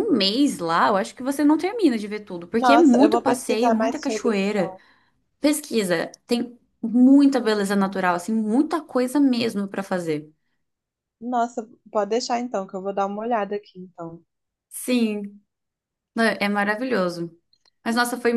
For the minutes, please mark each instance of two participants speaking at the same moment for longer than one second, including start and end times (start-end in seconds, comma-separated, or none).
2.5-4.8